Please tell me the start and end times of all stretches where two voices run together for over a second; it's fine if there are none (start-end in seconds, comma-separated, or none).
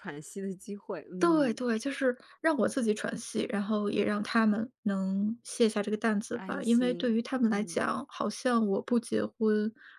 6.3-7.8